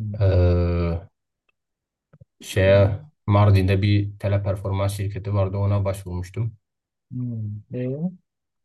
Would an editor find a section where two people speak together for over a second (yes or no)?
no